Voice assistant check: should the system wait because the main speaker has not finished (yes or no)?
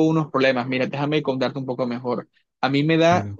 yes